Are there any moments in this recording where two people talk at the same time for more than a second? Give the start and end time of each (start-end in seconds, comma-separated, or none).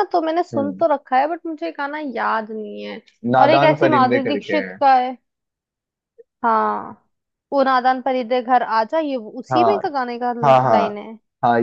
3.4-4.8